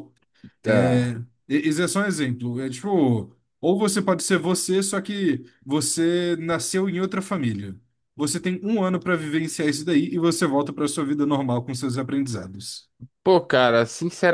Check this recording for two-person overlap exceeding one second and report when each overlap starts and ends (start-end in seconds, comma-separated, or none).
none